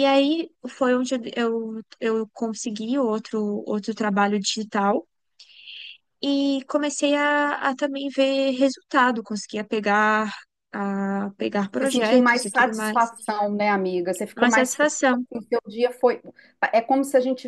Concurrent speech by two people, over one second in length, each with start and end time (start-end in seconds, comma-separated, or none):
11.8-13.1